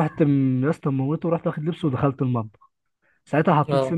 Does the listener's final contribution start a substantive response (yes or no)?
no